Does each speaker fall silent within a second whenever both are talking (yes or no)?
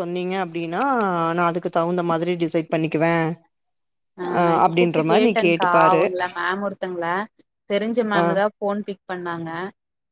yes